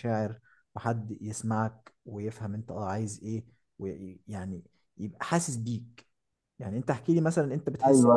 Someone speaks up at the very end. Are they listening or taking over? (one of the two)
taking over